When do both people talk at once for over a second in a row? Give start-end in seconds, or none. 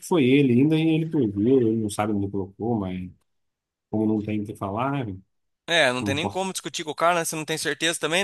none